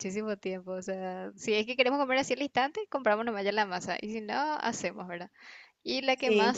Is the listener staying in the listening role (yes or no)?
yes